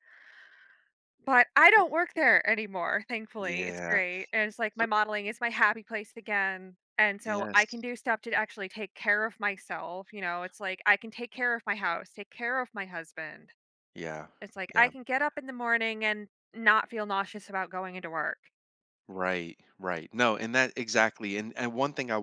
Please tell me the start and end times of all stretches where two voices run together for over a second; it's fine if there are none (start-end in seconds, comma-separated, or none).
none